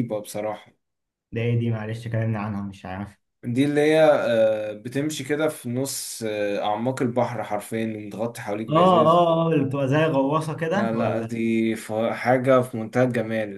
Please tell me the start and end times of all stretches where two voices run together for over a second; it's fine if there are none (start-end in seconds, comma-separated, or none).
none